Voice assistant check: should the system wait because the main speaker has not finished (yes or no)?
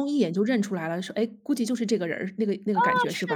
no